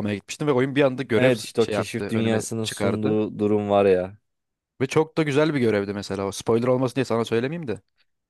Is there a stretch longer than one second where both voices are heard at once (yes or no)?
yes